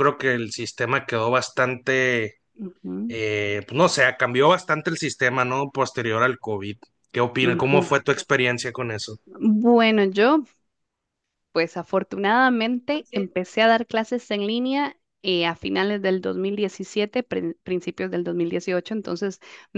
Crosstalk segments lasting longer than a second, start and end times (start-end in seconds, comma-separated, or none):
none